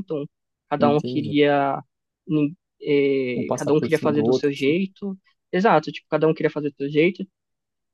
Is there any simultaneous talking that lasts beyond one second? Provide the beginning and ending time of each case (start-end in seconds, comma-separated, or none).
3.3-4.8